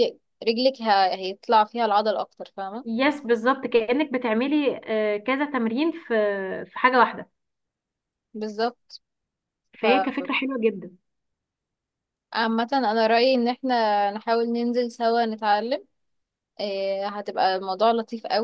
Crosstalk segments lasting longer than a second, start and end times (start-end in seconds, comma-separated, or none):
none